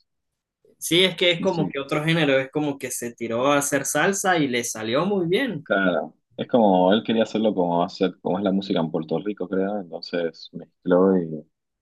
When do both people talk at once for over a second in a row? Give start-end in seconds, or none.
none